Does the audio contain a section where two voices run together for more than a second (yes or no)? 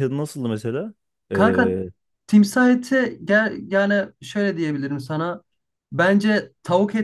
no